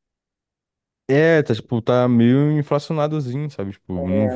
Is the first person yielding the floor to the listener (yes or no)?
yes